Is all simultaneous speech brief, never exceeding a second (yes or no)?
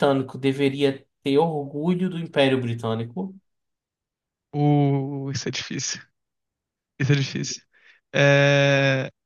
yes